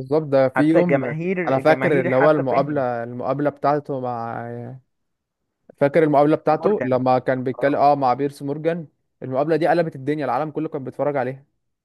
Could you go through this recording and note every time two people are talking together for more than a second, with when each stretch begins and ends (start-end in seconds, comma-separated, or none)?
0.6-2.8